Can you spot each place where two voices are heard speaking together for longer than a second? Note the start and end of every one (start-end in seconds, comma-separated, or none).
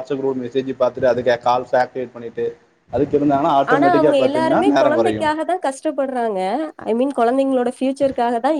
3.7-5.3